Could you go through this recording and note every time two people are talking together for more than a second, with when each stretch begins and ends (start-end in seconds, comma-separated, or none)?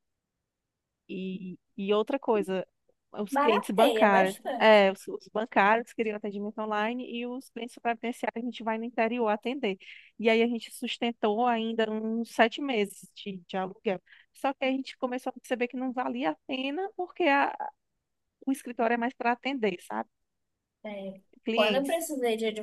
3.4-4.8